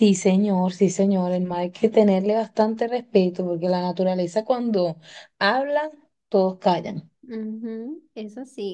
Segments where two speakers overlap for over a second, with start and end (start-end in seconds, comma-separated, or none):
none